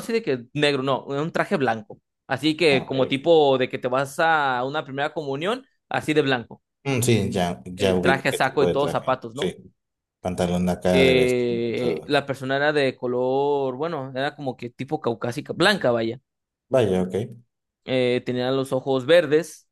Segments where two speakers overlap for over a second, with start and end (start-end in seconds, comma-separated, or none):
7.8-9.5, 10.9-12.2